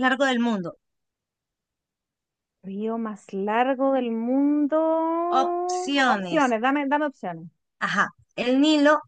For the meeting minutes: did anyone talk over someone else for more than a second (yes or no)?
no